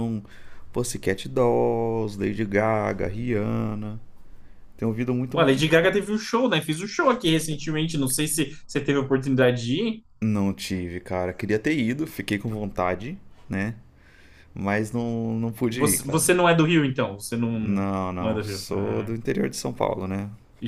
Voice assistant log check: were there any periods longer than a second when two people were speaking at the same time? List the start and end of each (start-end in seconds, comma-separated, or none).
17.6-19.1